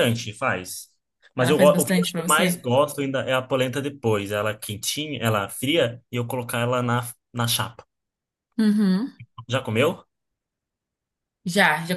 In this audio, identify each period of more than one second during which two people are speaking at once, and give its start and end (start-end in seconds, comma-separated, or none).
1.4-2.6